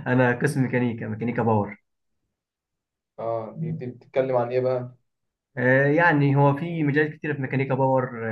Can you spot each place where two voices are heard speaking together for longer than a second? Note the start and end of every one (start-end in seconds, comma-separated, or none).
none